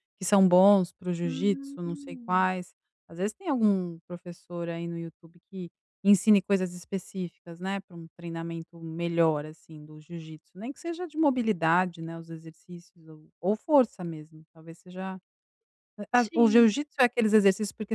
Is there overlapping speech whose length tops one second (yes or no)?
yes